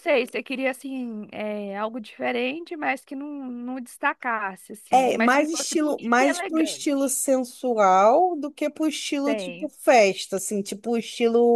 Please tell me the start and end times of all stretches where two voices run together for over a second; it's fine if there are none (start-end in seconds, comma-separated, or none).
4.9-7.2